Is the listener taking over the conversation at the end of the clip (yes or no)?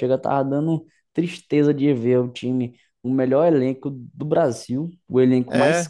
no